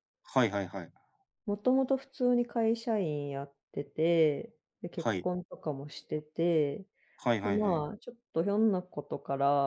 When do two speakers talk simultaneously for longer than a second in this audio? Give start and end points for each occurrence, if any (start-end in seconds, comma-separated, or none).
none